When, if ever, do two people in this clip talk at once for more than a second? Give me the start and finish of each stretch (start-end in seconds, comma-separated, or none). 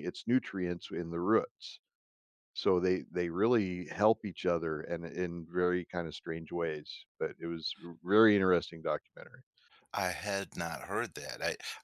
none